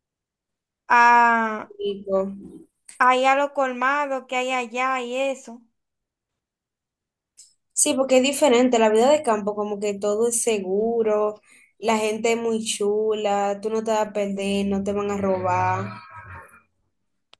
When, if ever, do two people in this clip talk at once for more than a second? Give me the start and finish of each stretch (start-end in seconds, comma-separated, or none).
none